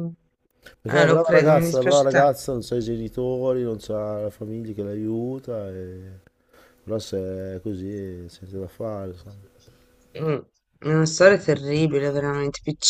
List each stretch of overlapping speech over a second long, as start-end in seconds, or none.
0.9-2.1